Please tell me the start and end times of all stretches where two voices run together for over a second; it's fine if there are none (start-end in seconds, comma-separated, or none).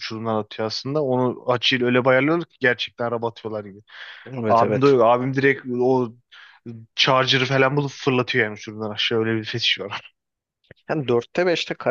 none